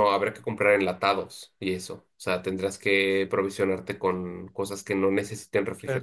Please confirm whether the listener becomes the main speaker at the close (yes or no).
yes